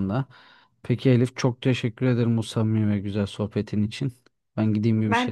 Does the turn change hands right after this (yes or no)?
no